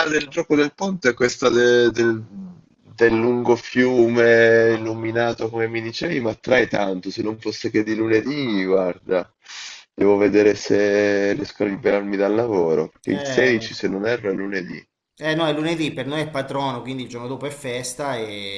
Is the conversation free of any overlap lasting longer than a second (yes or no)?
yes